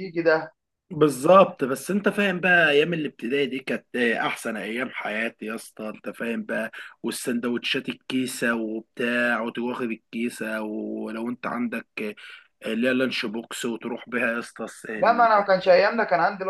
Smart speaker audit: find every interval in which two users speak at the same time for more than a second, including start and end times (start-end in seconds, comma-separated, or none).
none